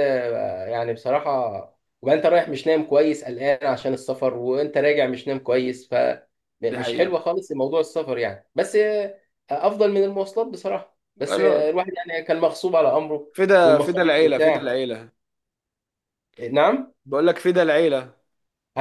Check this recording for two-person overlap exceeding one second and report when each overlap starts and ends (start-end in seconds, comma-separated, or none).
13.3-14.7